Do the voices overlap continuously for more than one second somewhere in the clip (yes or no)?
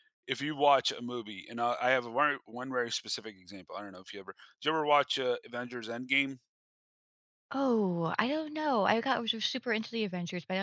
no